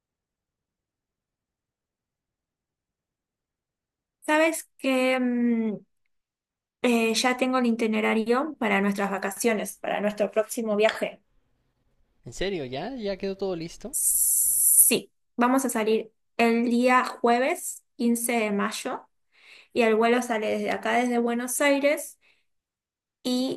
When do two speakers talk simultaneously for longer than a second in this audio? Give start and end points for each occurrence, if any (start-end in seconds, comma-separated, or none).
none